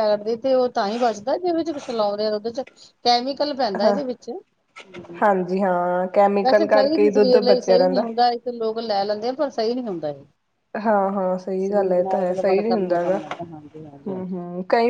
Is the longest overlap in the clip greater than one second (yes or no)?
yes